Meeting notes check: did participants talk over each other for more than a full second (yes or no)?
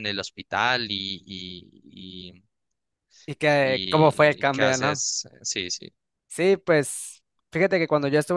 yes